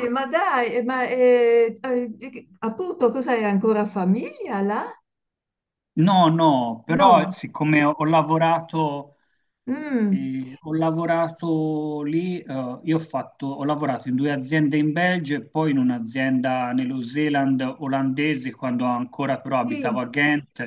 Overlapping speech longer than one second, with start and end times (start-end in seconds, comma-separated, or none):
none